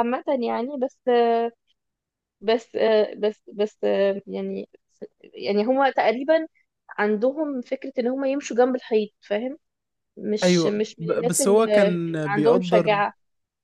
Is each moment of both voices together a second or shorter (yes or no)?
no